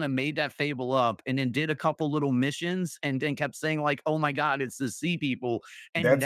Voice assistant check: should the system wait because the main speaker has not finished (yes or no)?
no